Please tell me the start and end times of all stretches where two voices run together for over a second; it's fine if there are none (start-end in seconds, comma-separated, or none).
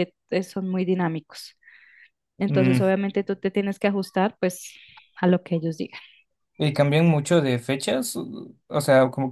none